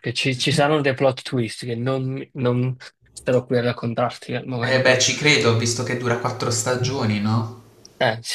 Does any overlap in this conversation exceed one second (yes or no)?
no